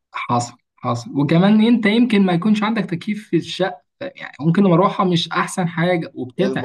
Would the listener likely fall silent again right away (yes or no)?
no